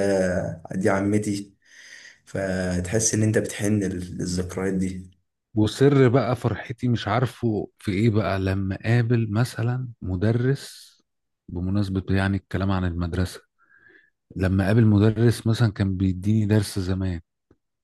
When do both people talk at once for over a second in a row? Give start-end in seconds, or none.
none